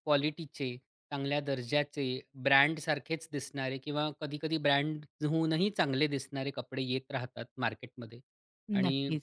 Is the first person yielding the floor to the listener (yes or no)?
no